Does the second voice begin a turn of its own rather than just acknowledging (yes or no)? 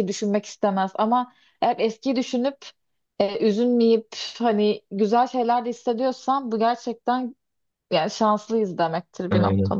yes